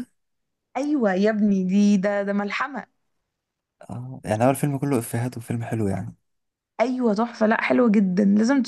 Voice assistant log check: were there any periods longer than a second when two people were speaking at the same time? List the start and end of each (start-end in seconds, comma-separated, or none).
none